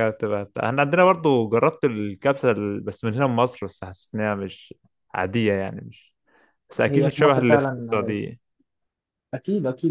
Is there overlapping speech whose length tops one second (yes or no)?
yes